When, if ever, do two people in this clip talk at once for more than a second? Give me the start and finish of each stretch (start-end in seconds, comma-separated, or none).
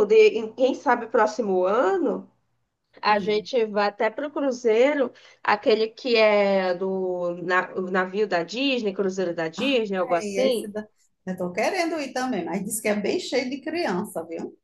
none